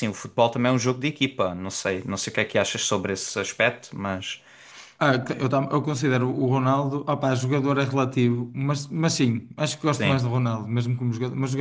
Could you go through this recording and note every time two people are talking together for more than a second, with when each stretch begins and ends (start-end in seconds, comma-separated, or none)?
none